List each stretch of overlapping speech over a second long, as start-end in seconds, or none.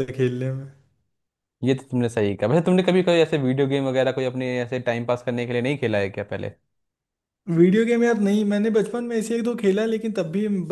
none